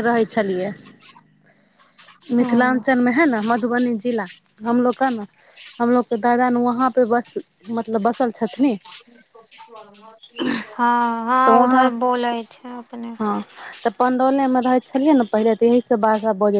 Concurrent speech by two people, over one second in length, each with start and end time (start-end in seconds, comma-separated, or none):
none